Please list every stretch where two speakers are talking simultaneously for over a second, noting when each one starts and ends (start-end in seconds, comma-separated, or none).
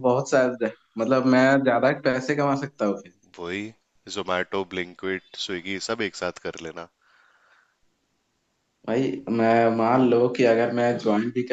none